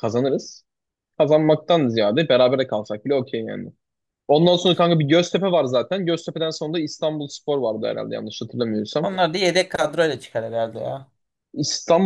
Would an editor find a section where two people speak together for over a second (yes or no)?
no